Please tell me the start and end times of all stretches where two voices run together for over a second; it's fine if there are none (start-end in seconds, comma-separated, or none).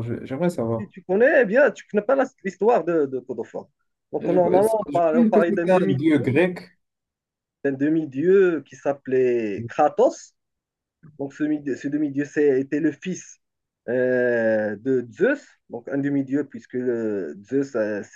4.2-6.0